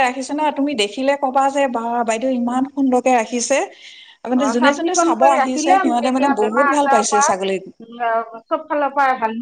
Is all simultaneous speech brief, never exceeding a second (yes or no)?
no